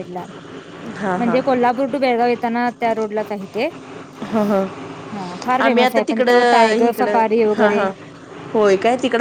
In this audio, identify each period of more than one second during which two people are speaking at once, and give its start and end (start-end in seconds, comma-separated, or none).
5.6-7.8